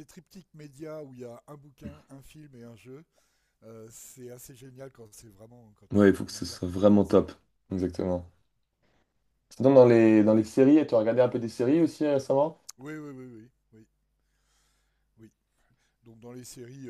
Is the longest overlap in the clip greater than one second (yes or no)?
yes